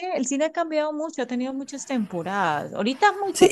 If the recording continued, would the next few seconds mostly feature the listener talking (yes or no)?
no